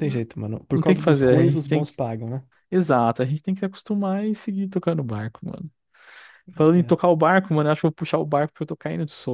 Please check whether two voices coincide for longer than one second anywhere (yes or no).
yes